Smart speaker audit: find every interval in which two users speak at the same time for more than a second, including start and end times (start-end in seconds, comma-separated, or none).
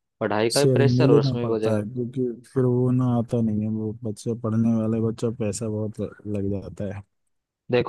0.5-1.9